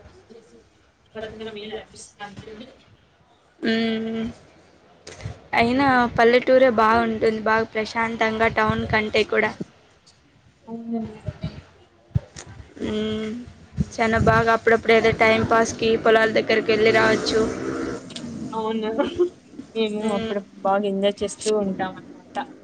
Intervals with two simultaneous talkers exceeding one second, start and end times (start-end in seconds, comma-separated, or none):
1.2-2.7